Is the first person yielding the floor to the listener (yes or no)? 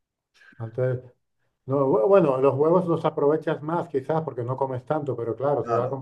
no